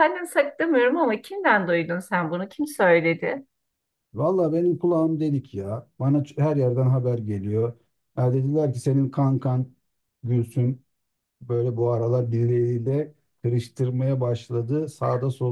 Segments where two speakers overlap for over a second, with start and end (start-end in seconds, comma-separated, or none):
none